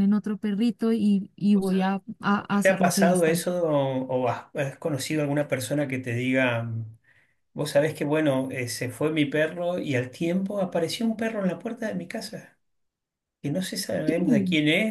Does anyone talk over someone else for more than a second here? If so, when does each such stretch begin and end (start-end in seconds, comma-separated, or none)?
1.5-3.5